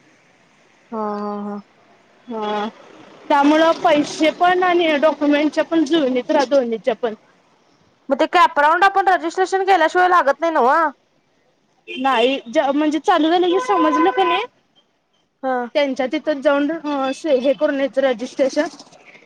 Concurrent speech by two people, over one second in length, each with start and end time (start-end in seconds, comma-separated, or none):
none